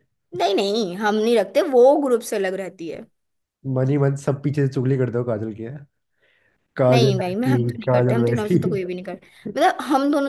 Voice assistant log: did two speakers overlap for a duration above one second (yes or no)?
yes